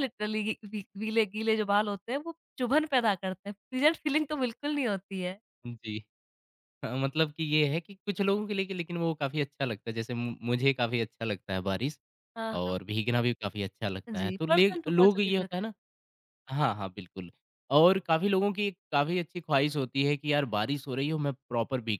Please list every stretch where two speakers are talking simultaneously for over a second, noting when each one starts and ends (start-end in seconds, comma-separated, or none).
14.1-15.6